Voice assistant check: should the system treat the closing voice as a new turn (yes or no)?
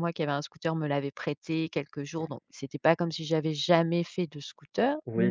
yes